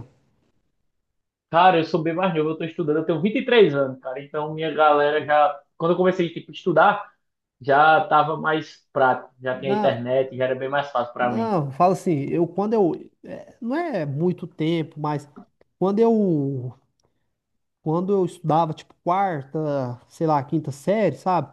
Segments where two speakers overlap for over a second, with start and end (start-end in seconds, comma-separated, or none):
none